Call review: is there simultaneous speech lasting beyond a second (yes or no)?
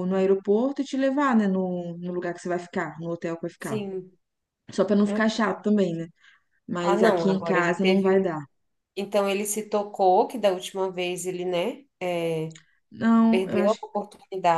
yes